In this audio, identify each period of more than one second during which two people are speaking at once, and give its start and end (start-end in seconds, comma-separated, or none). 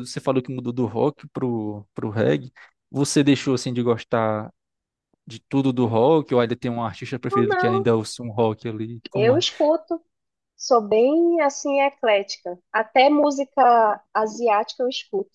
none